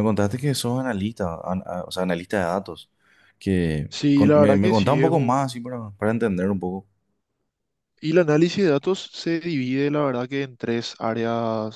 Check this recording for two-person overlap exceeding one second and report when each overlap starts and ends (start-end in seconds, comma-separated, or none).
3.9-5.7